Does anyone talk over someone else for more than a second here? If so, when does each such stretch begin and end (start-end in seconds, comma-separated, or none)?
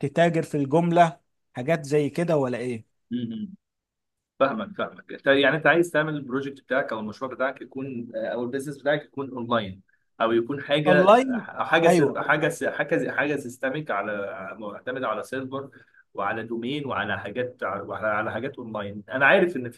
none